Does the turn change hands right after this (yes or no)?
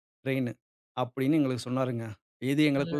no